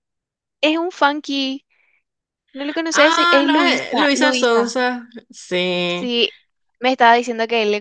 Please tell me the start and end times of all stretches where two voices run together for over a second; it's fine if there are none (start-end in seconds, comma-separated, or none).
2.9-4.8